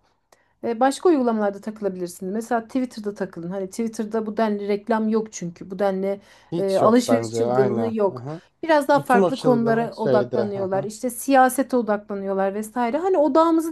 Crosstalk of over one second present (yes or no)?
yes